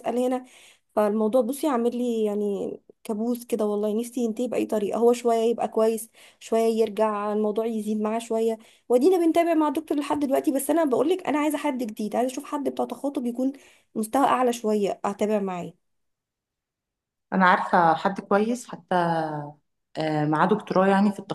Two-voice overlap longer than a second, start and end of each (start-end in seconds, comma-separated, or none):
none